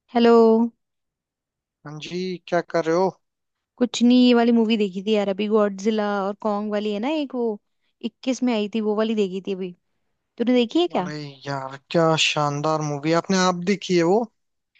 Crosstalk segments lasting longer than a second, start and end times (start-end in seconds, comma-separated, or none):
none